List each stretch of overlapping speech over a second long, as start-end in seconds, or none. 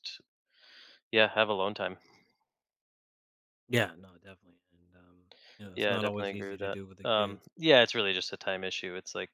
5.7-7.5